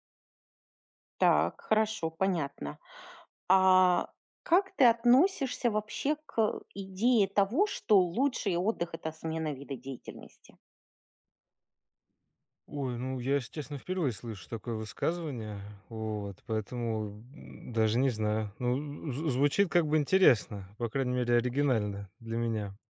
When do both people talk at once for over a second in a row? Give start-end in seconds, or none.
none